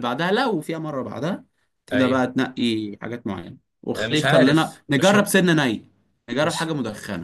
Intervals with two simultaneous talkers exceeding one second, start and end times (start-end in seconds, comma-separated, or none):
4.0-5.3